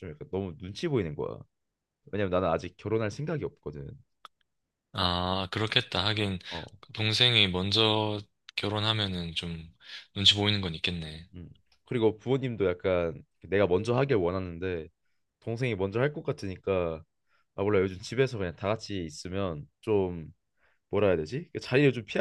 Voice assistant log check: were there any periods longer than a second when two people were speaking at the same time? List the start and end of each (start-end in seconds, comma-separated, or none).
none